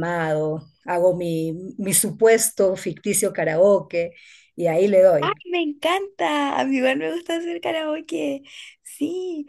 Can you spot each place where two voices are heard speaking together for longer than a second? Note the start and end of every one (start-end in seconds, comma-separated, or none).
none